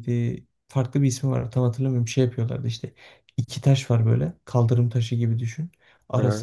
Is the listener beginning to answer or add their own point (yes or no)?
no